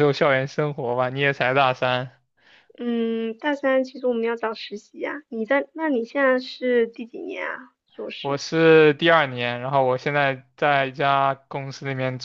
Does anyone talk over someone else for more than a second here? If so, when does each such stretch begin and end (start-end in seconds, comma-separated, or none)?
none